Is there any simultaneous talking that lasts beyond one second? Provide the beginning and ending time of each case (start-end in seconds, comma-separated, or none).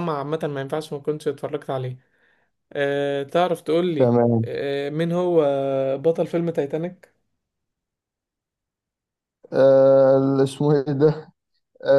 none